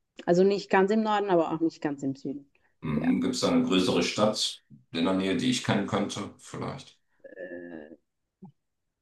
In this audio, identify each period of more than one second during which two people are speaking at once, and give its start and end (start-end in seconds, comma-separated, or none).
none